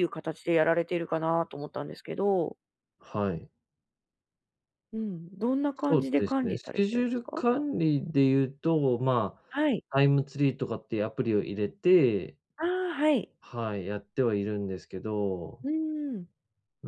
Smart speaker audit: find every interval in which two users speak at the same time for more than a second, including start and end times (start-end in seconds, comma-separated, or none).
5.9-7.4